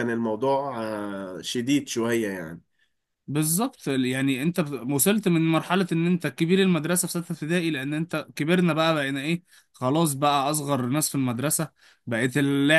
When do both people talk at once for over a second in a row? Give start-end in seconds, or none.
none